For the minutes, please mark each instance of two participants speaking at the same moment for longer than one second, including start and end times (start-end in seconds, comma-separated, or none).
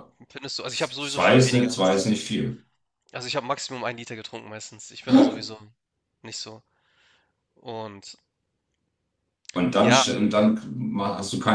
0.7-2.0